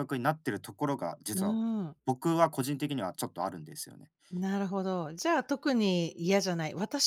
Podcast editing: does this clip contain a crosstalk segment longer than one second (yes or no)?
no